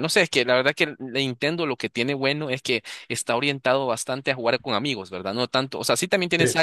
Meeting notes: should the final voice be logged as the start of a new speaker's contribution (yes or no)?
no